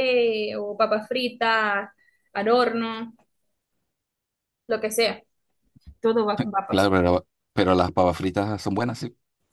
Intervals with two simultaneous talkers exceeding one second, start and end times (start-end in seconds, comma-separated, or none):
none